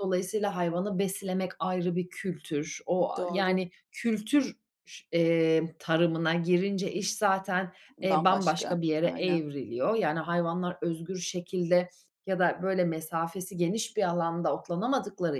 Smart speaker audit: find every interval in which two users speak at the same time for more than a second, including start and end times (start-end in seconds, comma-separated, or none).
8.0-9.4